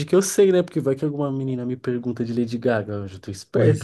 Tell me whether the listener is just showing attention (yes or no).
no